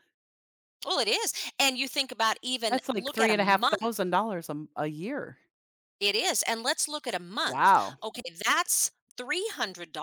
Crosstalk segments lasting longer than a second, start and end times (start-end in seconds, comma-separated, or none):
2.7-3.9